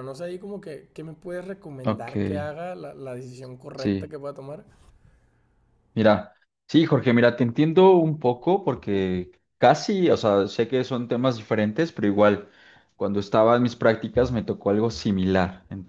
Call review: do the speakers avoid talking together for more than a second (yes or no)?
yes